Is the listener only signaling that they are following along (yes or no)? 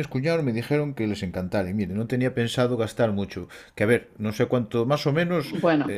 yes